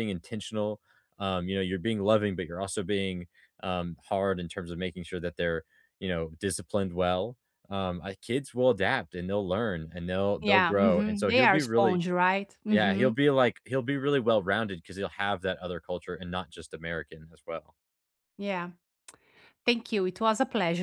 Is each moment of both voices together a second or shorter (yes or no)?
no